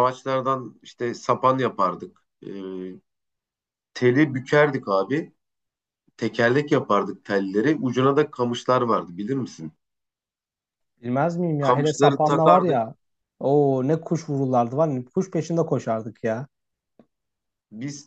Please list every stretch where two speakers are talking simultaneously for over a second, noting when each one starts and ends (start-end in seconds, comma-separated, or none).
11.6-12.8